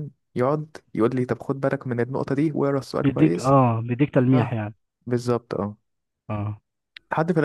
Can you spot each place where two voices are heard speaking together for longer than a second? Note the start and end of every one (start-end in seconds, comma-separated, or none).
none